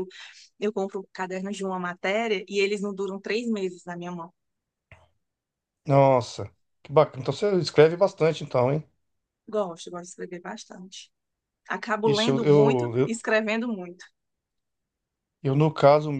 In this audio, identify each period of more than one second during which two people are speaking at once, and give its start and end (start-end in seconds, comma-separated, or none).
12.0-13.2